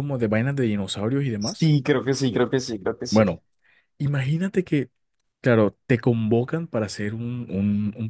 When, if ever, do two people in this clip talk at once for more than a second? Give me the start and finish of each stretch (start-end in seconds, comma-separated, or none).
none